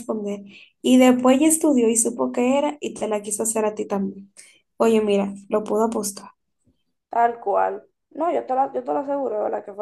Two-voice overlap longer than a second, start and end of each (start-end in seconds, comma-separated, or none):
none